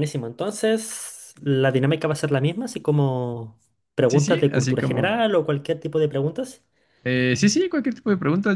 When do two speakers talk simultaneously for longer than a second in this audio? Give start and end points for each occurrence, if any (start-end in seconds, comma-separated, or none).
4.1-5.3